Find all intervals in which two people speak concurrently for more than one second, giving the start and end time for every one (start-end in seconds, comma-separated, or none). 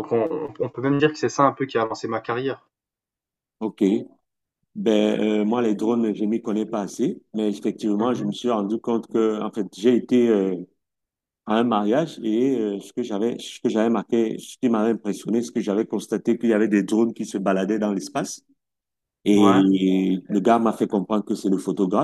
none